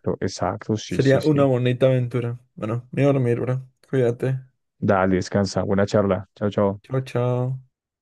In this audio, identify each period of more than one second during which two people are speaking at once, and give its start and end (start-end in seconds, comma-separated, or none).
none